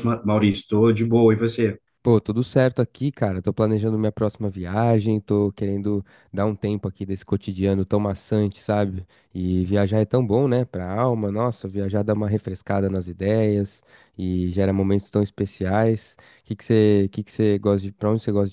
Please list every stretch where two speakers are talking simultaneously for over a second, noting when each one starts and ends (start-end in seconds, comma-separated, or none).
none